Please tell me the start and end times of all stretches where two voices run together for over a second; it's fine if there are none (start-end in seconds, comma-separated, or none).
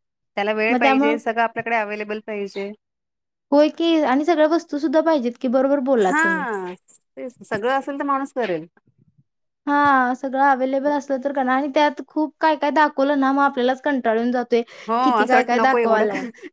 none